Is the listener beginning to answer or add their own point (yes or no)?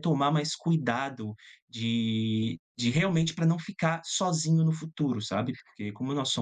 no